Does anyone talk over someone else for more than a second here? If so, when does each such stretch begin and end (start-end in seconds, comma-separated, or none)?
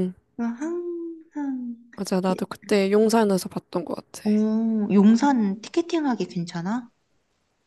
none